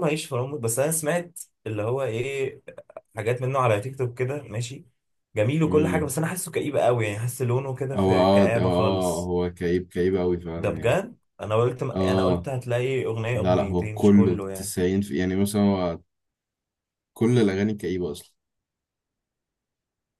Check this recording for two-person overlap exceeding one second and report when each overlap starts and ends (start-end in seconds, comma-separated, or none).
7.9-9.3, 13.3-14.7